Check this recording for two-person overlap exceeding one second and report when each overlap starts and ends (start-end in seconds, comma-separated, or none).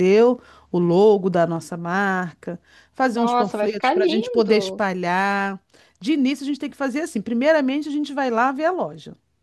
3.1-4.9